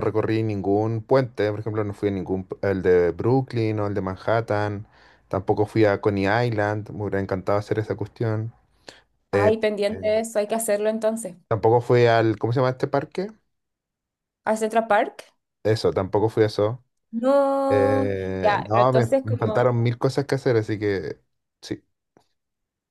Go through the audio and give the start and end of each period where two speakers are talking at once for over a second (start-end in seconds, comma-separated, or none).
17.7-19.7